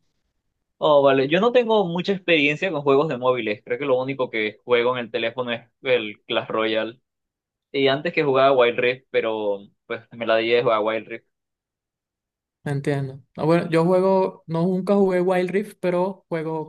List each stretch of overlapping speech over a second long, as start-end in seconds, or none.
none